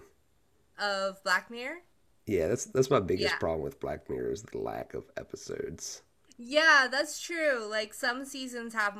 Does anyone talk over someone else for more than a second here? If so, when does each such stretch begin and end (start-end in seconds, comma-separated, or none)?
none